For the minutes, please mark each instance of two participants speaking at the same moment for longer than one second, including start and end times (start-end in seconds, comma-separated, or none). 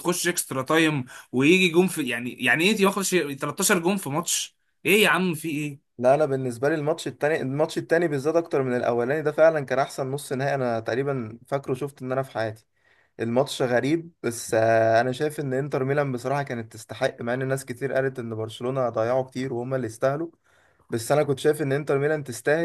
none